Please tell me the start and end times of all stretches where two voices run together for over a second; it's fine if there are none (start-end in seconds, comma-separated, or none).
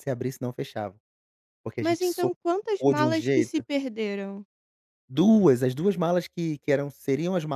1.8-3.6